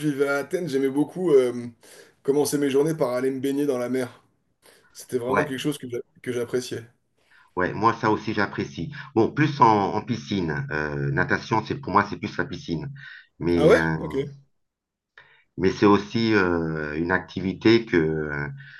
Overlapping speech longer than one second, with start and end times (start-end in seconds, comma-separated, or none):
none